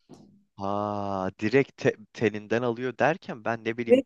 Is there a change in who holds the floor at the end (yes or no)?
no